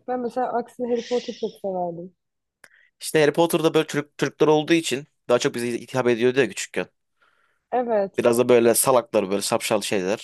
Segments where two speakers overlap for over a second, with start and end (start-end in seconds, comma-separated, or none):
none